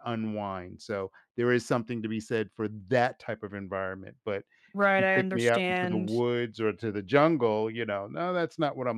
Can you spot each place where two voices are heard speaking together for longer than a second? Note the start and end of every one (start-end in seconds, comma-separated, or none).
4.9-6.2